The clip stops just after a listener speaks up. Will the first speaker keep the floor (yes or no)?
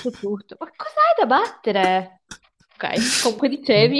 no